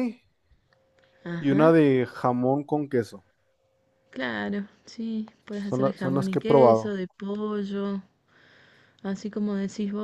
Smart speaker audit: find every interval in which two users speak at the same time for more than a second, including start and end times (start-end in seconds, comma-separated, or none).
5.5-7.0